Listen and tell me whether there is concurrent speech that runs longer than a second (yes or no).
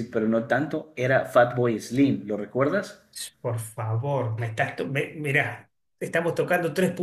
no